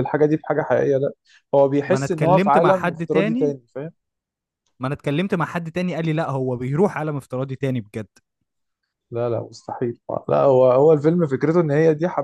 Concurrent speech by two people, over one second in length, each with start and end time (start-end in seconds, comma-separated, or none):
1.9-3.5